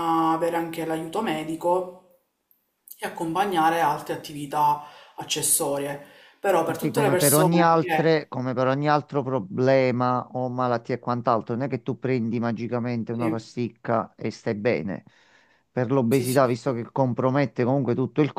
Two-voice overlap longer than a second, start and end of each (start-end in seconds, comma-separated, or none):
6.7-8.1